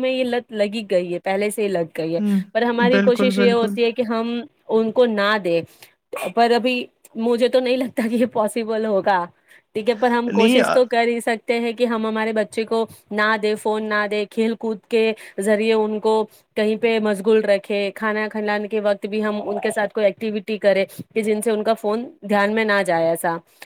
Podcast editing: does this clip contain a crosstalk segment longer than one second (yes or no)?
yes